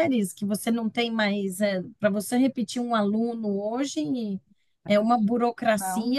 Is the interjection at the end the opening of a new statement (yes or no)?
no